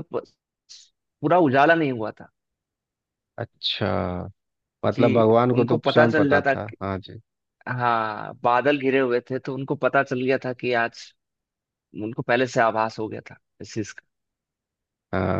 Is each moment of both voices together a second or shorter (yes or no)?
no